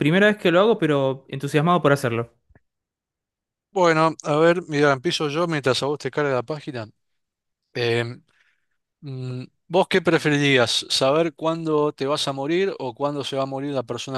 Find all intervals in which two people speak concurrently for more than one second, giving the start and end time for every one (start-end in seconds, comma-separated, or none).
none